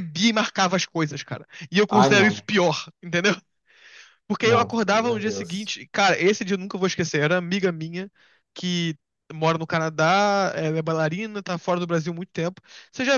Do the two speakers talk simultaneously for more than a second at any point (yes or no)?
yes